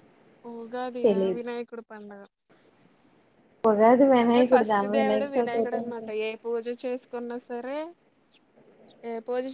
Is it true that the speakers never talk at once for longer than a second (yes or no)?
no